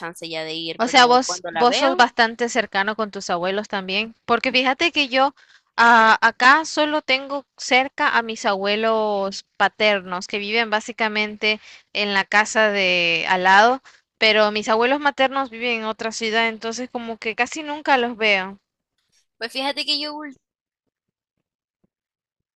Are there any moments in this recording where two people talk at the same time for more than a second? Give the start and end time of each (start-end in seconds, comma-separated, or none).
0.8-2.0